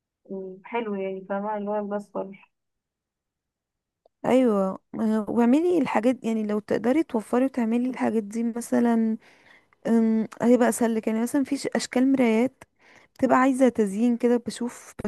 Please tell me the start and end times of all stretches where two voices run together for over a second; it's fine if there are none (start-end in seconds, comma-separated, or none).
none